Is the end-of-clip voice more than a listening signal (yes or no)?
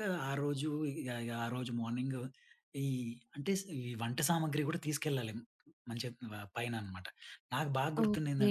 no